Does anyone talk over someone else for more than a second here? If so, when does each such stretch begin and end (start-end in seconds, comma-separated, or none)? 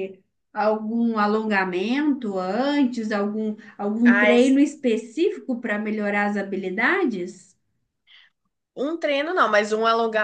none